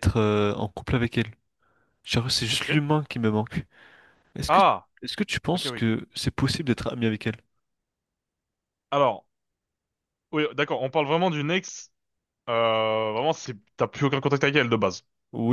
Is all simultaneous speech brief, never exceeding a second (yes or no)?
yes